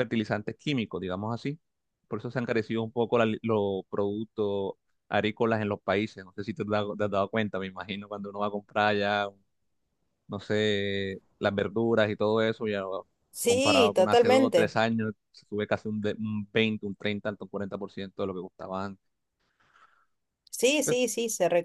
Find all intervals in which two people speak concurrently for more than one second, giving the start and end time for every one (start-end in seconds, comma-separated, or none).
13.4-14.8